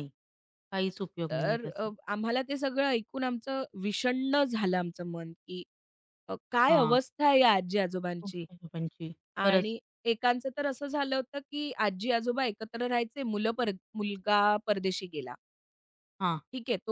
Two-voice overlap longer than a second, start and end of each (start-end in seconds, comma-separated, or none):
none